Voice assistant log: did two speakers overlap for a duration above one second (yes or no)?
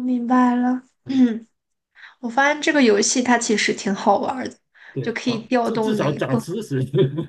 yes